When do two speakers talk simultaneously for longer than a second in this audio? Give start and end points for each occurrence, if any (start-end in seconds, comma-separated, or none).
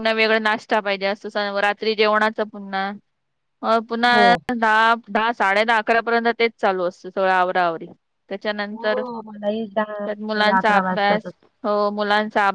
8.7-11.3